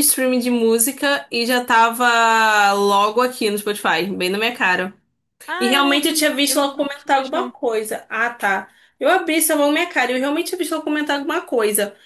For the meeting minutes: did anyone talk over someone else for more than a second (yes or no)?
yes